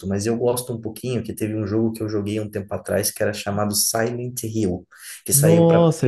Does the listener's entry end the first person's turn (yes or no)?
yes